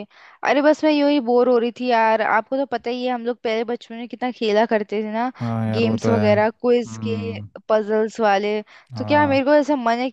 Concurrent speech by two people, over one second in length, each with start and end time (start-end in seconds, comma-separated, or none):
5.8-7.1